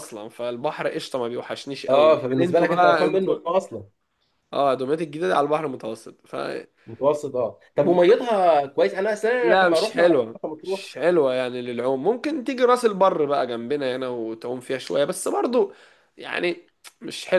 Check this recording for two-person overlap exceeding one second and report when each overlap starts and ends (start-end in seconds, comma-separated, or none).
1.9-3.4, 9.4-10.8